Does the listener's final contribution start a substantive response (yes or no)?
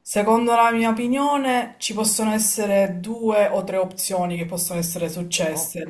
no